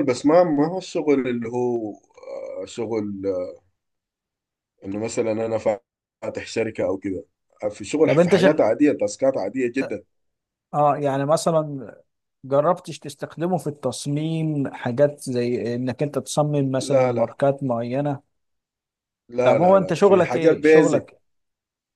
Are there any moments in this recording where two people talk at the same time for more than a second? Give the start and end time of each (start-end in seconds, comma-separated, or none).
19.4-21.1